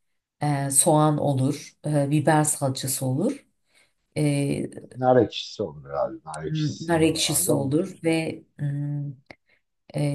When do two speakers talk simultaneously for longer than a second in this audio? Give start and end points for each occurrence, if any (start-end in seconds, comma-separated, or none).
6.4-8.1